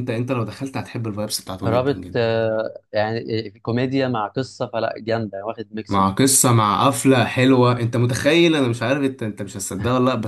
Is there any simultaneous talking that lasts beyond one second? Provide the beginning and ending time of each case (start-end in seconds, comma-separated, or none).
none